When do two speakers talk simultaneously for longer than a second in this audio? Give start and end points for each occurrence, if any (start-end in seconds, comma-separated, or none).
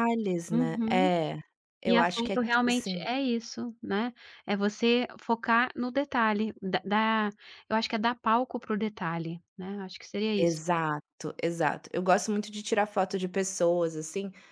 1.8-3.0